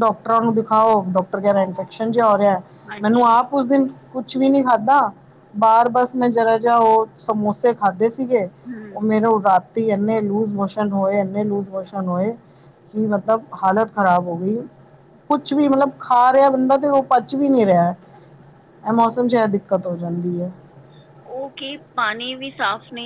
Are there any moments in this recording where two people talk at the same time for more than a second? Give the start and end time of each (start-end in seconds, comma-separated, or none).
none